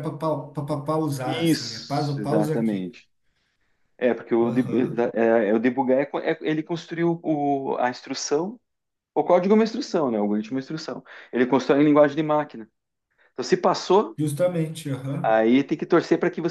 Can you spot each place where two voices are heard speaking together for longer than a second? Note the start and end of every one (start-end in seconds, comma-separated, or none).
1.2-3.0